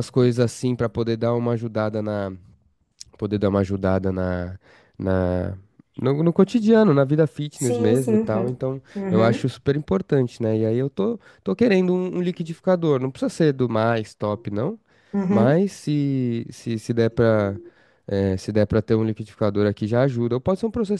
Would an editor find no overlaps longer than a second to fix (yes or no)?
no